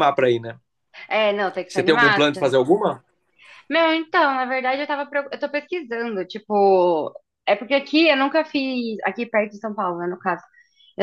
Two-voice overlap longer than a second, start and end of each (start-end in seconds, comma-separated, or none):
none